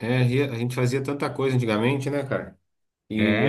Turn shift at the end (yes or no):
no